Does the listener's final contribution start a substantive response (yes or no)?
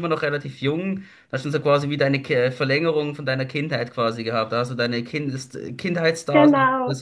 no